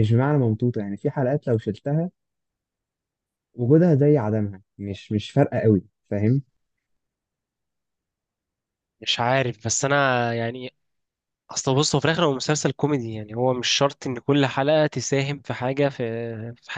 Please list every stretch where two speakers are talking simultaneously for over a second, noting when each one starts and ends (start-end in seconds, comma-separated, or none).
none